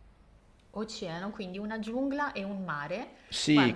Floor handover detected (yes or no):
yes